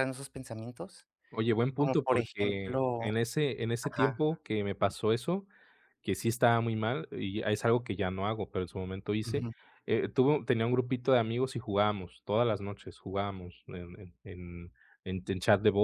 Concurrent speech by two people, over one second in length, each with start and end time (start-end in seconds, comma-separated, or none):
1.8-3.1